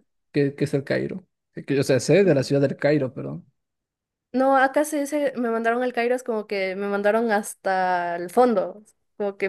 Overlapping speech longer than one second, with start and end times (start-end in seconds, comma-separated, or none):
none